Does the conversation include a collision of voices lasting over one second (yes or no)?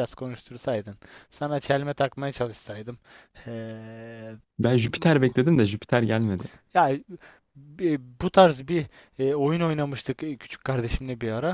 no